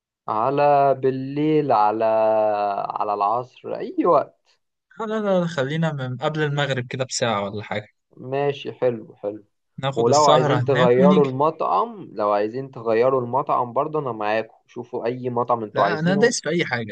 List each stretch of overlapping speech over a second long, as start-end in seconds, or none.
9.9-11.4